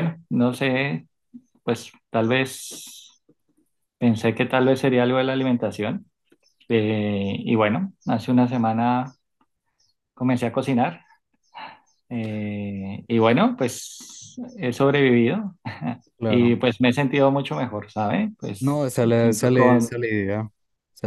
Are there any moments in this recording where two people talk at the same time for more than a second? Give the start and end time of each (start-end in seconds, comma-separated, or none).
18.6-19.9